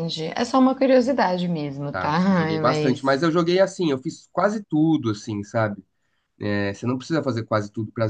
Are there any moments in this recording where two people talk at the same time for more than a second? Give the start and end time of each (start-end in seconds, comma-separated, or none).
1.9-3.2